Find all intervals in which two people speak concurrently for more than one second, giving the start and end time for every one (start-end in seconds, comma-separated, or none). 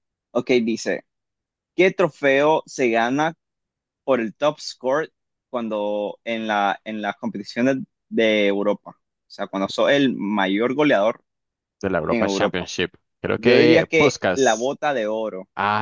13.4-14.7